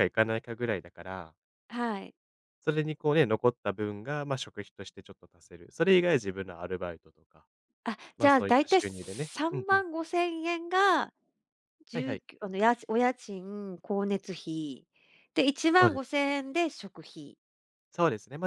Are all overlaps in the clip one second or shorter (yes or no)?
no